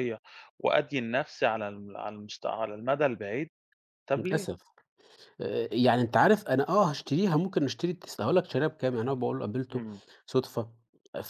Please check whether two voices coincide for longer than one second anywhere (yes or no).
no